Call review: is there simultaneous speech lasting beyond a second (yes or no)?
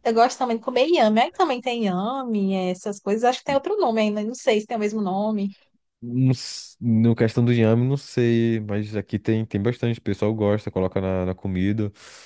no